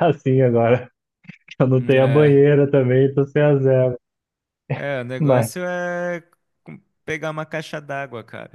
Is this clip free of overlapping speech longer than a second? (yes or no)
yes